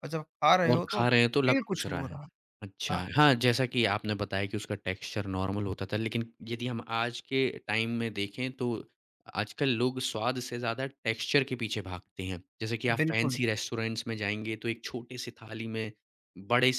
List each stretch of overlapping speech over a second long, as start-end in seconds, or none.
0.7-2.2